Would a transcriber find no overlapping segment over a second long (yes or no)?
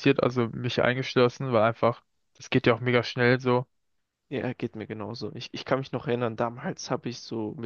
yes